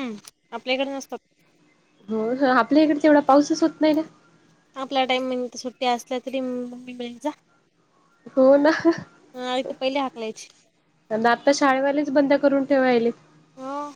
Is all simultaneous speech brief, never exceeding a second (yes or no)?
yes